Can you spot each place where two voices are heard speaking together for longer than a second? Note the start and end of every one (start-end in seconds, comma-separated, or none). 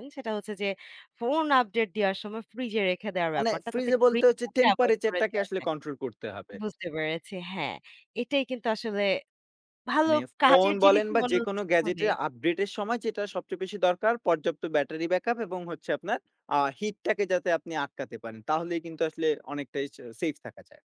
3.4-5.7, 10.0-12.1